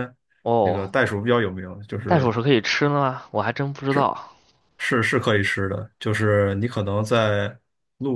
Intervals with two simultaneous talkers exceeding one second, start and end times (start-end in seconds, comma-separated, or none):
none